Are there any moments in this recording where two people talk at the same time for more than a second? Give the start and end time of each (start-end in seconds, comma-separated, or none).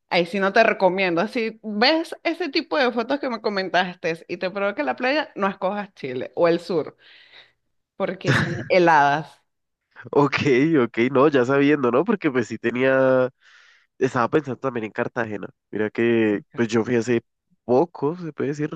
none